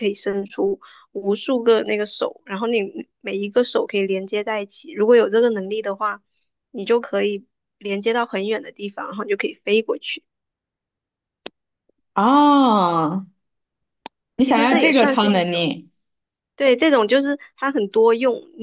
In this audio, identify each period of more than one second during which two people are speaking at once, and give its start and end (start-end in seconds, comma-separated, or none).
14.4-15.7